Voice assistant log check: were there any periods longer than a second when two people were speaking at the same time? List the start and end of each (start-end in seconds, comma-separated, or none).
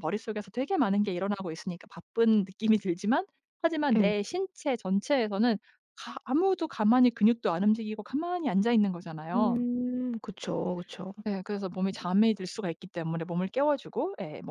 none